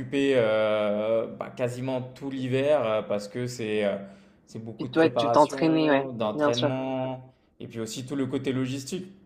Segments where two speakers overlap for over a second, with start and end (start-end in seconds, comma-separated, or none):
4.8-6.7